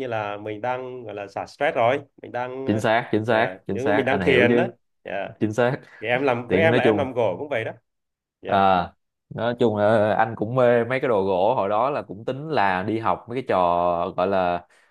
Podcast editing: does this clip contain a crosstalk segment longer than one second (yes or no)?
yes